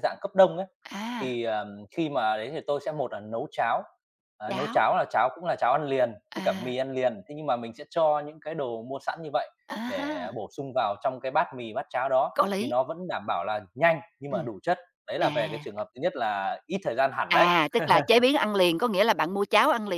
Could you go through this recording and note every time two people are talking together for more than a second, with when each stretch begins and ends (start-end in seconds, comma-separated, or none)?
none